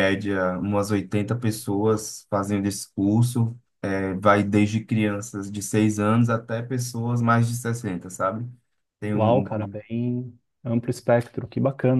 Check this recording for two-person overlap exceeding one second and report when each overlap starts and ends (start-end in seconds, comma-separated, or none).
none